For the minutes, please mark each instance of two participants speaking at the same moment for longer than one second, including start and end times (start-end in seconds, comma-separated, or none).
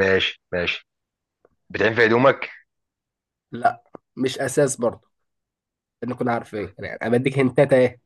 none